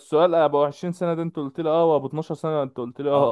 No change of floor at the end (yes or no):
no